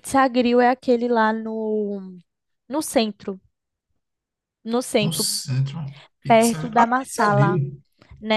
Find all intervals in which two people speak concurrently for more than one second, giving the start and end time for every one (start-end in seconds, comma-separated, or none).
6.3-7.6